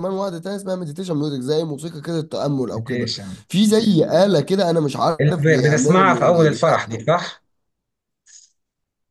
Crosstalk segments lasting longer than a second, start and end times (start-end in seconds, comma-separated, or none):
5.2-7.0